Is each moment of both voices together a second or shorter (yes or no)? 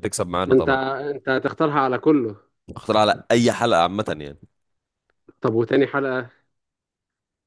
yes